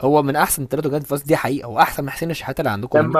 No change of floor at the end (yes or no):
no